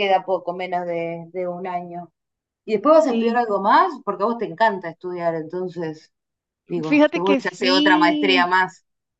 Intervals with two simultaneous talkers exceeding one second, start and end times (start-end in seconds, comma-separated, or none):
6.8-8.5